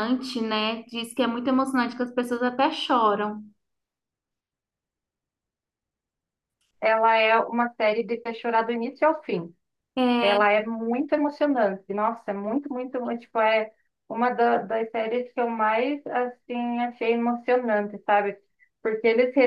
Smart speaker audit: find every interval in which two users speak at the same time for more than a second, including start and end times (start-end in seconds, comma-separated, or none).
none